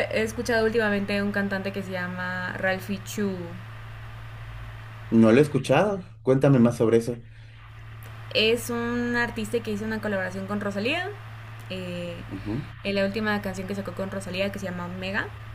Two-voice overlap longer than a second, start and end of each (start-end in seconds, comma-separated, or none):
none